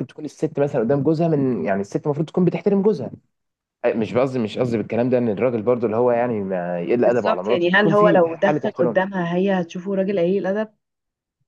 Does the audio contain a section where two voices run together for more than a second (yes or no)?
yes